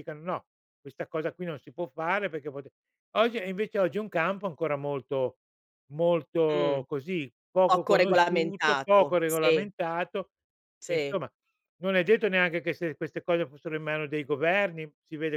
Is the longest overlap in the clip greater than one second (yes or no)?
yes